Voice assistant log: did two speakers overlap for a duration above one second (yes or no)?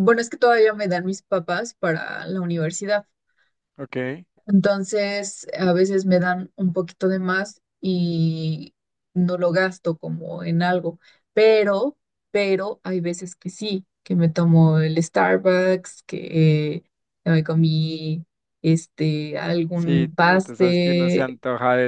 yes